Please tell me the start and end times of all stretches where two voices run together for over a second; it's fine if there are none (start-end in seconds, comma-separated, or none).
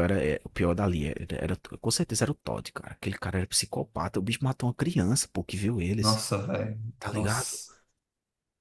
none